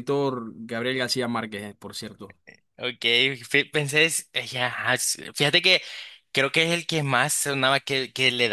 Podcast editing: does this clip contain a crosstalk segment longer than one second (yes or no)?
no